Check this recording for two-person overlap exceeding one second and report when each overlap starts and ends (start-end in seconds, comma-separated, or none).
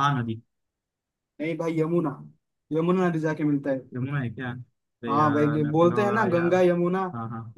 5.1-6.5